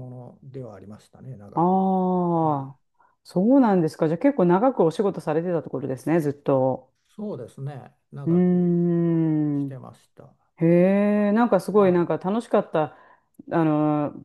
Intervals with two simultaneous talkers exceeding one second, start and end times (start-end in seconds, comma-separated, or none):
none